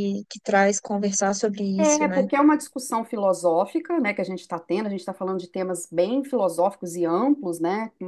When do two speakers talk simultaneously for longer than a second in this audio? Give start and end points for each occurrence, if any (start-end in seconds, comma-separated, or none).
none